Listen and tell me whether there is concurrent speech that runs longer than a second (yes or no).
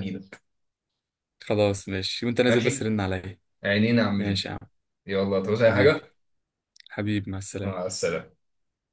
no